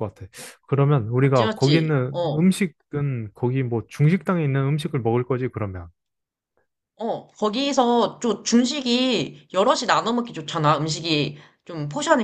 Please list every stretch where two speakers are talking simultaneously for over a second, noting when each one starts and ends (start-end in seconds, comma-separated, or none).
1.2-2.5